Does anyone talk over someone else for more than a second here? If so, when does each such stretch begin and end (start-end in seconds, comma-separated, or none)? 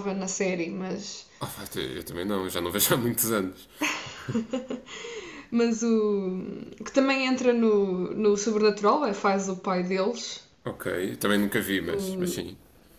none